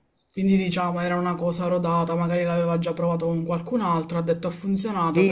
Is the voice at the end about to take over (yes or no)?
yes